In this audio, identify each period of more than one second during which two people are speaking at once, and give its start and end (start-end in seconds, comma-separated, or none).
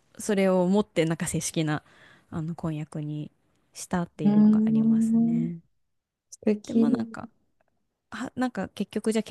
4.2-5.5